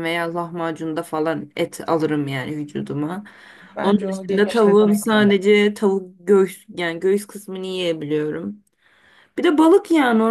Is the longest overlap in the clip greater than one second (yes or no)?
yes